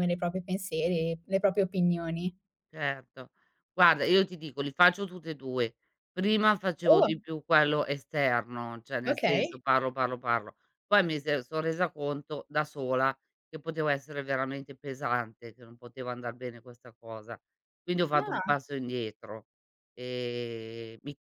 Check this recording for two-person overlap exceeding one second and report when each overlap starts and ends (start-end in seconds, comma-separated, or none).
none